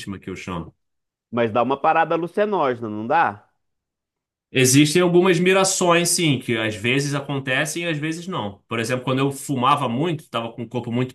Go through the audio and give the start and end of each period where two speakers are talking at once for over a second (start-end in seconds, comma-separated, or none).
none